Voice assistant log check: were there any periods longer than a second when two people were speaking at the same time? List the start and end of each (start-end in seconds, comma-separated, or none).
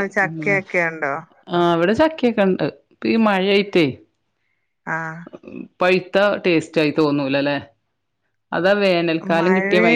none